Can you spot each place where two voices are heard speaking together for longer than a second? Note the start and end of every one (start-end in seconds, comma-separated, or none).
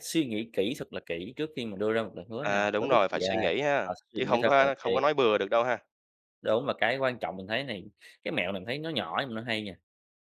2.4-4.9